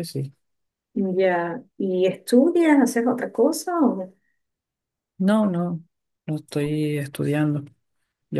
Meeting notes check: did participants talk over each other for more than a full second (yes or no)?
no